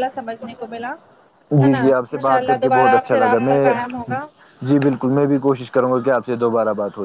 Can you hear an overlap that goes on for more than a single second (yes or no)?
yes